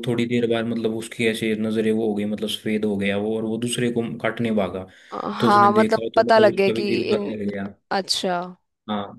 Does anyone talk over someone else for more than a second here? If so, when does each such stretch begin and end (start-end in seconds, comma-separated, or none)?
5.4-7.3